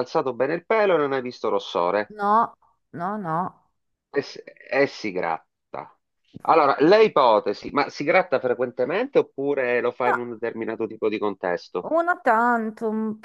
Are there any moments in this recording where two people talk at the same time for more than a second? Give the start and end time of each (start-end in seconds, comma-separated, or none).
none